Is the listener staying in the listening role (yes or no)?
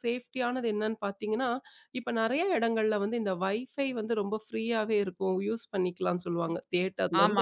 yes